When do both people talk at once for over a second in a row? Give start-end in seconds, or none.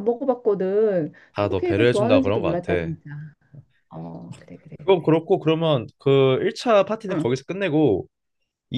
1.3-2.9